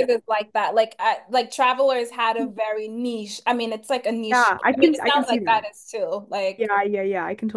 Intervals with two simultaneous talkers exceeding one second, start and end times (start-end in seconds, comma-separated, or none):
4.3-5.7